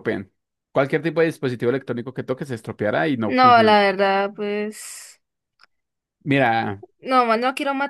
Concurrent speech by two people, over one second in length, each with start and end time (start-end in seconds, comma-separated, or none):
none